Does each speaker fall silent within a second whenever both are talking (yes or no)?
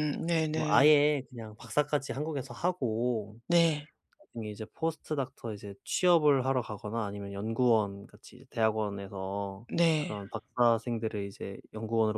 yes